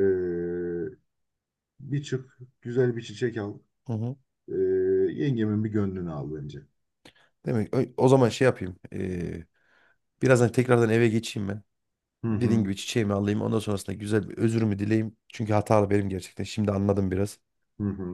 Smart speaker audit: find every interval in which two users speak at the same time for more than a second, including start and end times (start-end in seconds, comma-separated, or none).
none